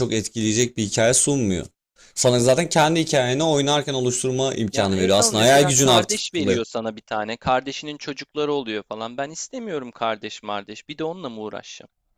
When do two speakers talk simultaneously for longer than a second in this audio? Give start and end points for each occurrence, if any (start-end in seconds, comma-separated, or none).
4.7-6.6